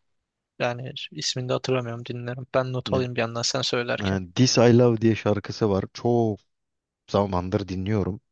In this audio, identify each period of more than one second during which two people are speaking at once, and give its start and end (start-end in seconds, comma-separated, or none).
none